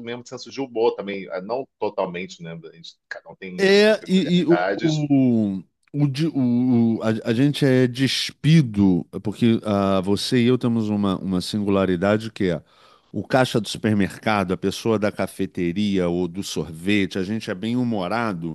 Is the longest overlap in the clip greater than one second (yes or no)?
yes